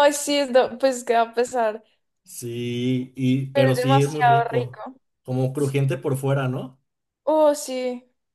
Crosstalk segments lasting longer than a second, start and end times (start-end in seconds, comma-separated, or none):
3.5-4.8